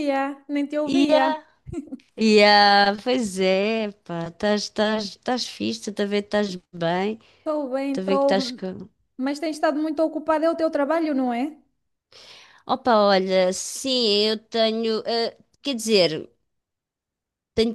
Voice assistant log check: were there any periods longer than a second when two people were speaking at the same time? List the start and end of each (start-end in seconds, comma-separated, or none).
none